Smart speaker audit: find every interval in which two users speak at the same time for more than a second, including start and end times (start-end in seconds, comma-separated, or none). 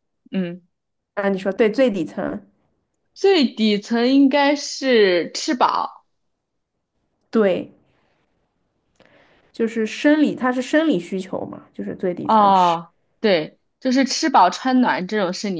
none